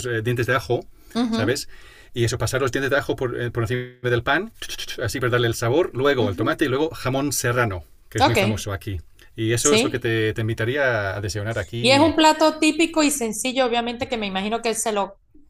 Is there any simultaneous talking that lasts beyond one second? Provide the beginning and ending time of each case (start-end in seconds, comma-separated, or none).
none